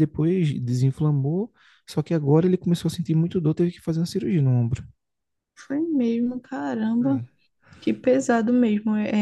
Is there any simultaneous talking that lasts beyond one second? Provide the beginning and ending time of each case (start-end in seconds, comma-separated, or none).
none